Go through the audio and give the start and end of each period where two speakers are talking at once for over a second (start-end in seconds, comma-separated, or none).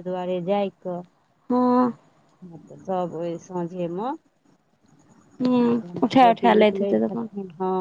5.7-7.3